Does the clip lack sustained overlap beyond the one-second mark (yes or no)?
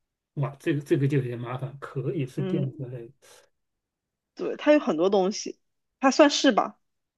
yes